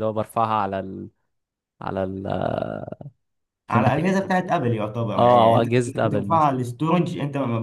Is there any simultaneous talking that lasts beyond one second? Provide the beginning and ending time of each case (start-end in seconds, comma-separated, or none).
5.2-6.5